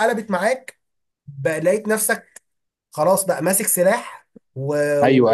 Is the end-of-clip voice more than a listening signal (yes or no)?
yes